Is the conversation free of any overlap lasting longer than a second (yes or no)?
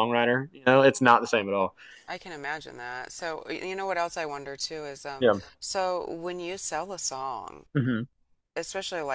yes